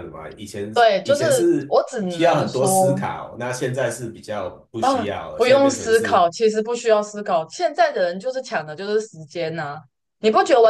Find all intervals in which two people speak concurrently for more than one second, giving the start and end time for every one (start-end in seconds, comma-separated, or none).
0.7-3.0, 4.8-6.3